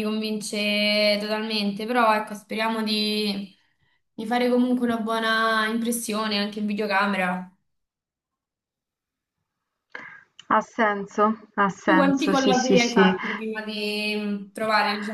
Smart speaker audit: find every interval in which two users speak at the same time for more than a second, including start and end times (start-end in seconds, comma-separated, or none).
11.8-13.1